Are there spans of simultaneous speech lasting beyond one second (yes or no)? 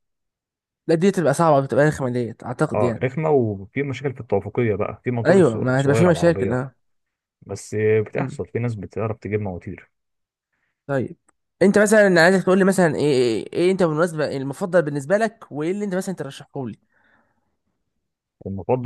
yes